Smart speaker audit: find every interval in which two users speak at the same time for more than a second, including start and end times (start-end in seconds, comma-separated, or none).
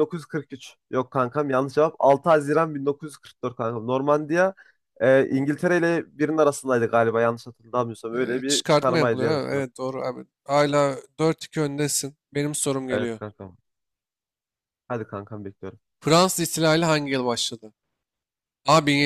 8.1-9.7